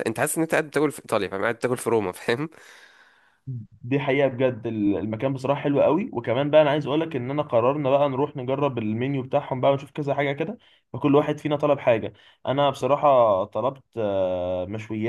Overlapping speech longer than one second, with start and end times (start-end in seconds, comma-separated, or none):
none